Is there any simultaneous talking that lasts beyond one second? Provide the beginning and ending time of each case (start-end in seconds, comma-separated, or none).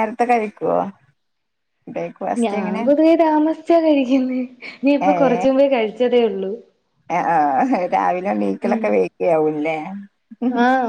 none